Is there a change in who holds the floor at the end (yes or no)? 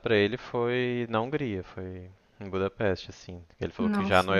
no